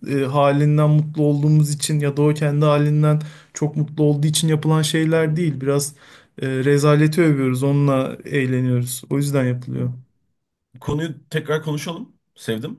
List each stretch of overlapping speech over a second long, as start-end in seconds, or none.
none